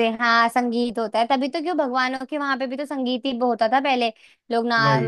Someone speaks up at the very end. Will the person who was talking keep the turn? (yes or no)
yes